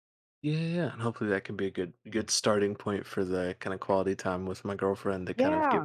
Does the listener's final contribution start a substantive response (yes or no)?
no